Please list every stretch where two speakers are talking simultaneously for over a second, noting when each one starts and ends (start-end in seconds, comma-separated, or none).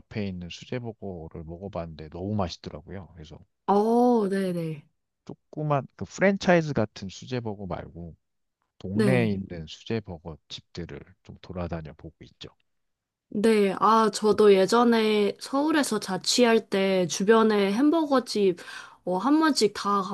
none